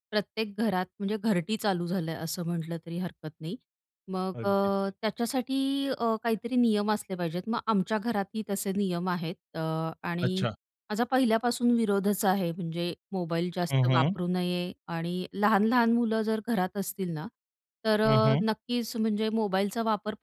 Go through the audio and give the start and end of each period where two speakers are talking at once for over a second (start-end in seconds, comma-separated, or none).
none